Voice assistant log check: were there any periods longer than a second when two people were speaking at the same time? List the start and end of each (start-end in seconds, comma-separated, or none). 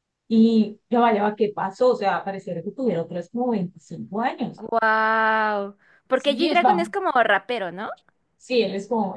none